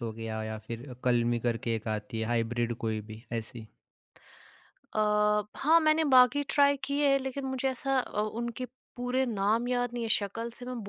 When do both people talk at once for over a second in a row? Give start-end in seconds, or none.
none